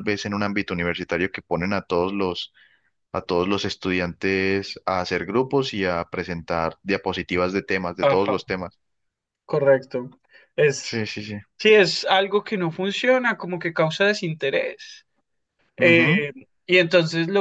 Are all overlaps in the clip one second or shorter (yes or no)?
yes